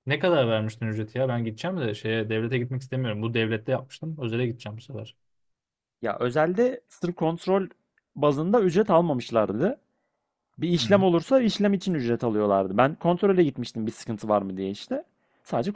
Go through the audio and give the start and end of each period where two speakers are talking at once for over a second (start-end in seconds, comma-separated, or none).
none